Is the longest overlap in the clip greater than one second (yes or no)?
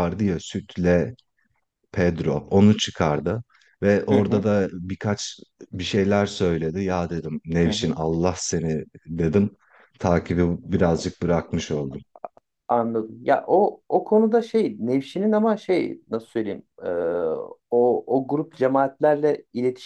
no